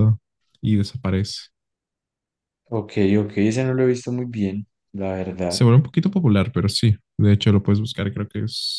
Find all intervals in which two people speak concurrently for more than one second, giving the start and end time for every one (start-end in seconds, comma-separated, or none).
none